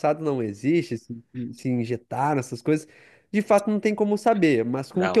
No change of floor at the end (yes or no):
yes